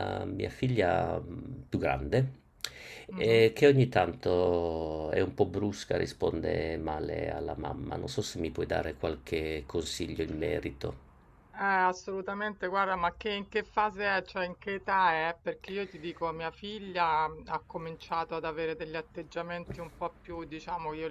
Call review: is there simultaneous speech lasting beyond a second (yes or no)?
no